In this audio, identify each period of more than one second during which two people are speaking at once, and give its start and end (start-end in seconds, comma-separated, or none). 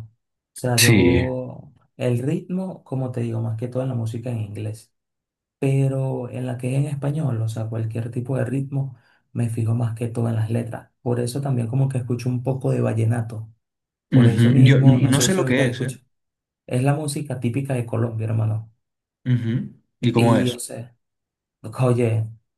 14.1-16.0